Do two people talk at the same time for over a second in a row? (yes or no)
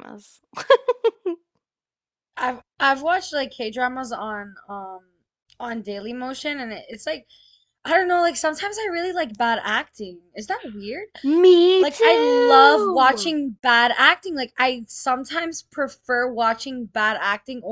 yes